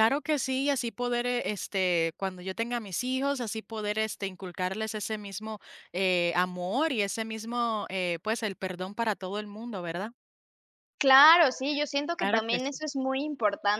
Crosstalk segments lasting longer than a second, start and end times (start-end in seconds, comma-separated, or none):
none